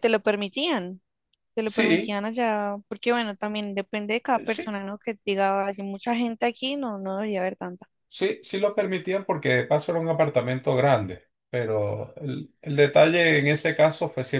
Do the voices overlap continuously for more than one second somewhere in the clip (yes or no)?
no